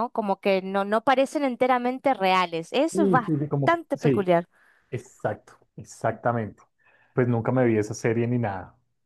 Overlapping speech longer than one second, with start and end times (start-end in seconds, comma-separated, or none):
2.9-4.3